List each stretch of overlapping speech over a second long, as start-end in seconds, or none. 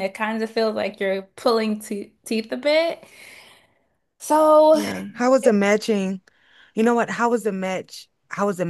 none